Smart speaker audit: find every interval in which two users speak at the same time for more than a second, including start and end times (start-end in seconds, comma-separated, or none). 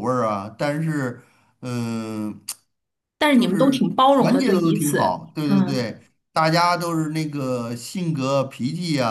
3.3-5.9